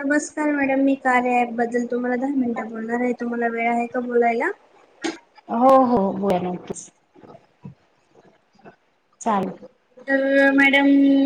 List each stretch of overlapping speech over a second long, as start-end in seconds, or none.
none